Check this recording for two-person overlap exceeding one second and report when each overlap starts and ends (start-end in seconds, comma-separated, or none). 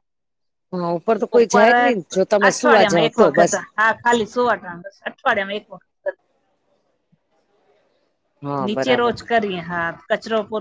1.4-3.5